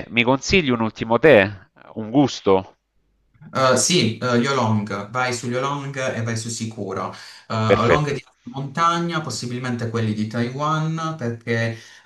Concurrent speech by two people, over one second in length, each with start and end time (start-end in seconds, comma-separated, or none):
none